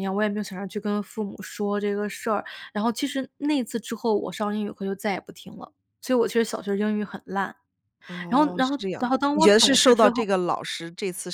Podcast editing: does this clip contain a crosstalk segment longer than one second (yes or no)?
yes